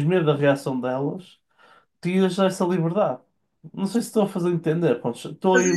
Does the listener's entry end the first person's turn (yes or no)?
yes